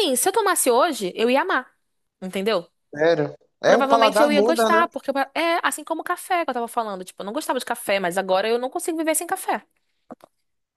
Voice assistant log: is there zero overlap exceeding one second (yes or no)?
no